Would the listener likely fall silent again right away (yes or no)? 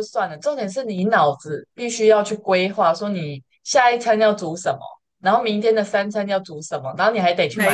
yes